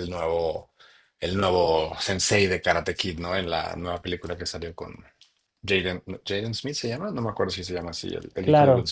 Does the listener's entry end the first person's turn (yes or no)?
yes